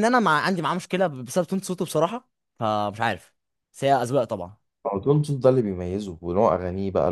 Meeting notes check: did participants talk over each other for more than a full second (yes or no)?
no